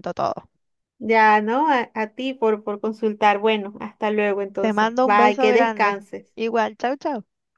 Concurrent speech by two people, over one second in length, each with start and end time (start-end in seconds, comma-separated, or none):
4.6-6.3